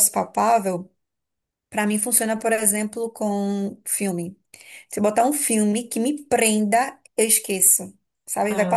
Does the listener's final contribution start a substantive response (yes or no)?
no